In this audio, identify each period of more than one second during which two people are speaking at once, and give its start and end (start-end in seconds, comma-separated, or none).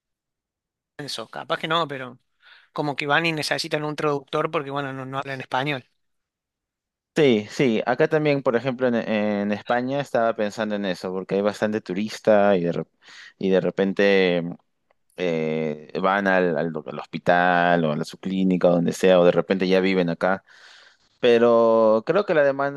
none